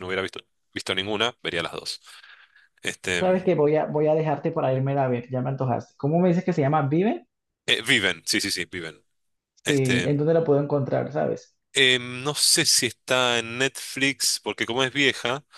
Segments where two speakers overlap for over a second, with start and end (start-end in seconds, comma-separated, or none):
none